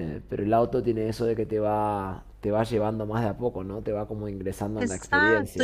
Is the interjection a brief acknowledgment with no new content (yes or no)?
no